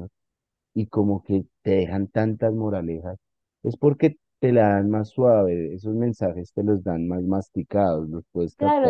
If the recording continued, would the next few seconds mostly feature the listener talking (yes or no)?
yes